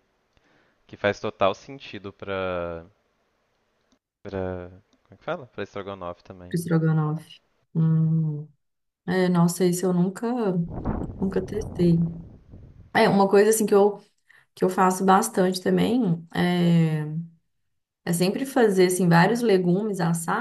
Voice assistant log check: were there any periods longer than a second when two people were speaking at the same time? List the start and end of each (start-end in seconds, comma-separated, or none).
none